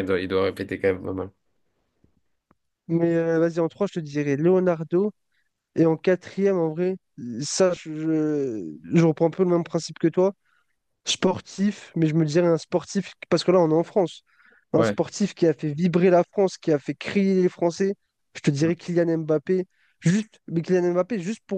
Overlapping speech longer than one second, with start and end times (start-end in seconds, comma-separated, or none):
none